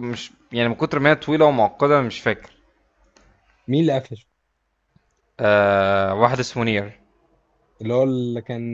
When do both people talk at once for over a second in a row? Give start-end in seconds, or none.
none